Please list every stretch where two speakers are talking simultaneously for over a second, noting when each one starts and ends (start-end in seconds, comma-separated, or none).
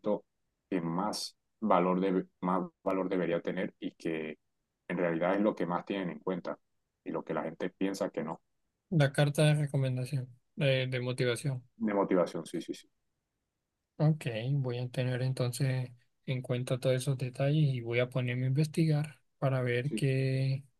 none